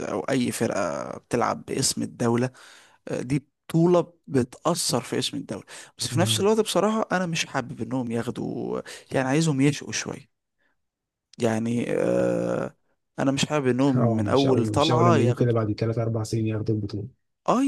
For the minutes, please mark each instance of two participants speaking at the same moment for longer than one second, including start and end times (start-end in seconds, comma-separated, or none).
14.0-15.6